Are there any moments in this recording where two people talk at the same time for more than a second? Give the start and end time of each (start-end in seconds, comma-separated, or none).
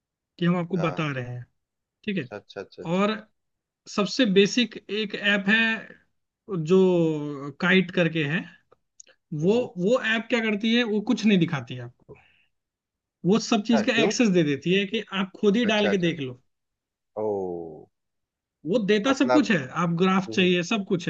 none